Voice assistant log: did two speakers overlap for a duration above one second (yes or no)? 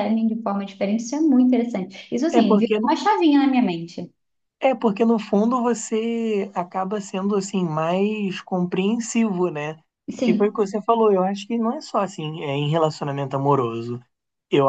no